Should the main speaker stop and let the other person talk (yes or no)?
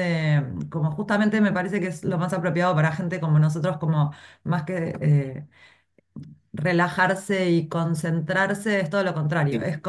no